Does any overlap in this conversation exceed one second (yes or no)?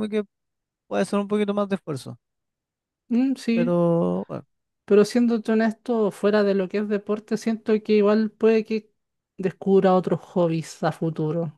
no